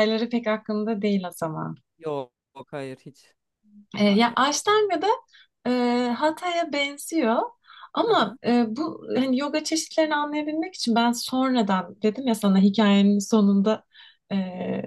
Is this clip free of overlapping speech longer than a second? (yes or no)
yes